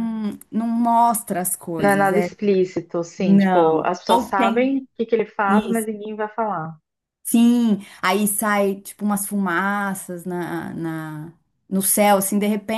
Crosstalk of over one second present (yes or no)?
yes